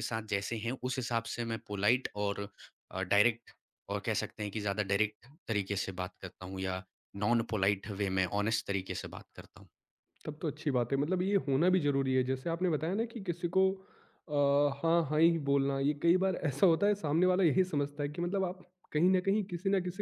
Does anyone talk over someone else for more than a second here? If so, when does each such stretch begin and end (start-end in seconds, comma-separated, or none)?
none